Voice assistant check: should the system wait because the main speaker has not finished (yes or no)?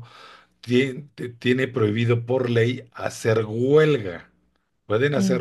yes